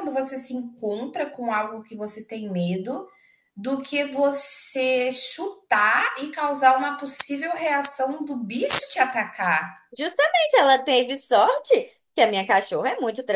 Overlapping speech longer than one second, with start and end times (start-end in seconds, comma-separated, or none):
none